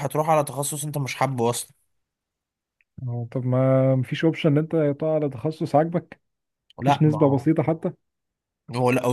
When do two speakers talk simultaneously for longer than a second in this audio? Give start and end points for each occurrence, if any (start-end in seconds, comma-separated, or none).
none